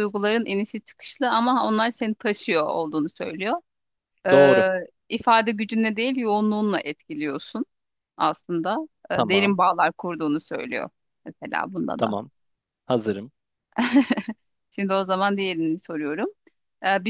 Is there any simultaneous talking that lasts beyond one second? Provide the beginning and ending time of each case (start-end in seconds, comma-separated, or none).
none